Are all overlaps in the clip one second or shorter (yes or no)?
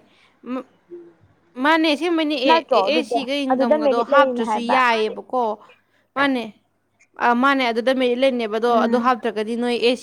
no